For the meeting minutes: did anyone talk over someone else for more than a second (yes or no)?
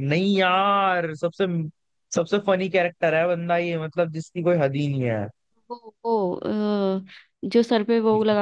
no